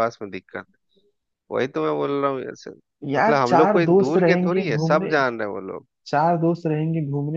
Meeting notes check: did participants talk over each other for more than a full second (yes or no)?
yes